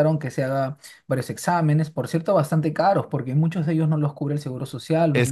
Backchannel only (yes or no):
no